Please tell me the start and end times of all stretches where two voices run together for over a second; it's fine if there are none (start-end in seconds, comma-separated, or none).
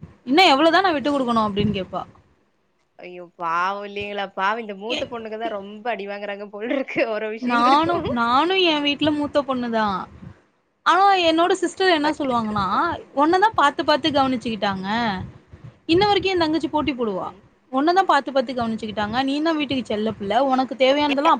none